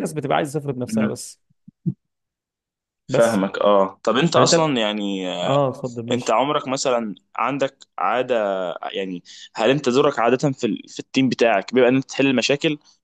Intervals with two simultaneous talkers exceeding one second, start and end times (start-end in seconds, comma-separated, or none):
none